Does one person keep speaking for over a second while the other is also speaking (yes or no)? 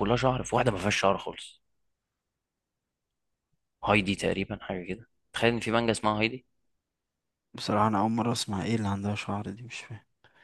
no